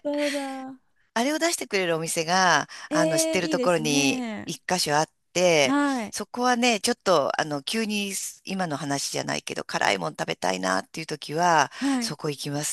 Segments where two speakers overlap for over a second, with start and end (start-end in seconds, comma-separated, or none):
2.9-4.5